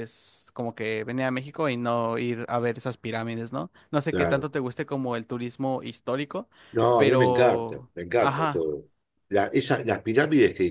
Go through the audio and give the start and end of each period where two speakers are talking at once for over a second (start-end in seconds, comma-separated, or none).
7.0-8.6